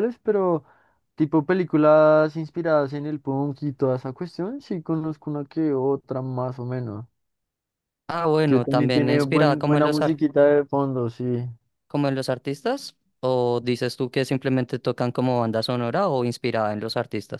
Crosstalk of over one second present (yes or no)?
yes